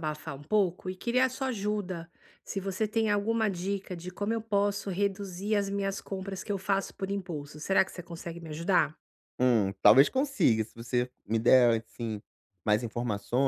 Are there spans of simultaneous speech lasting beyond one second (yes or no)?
no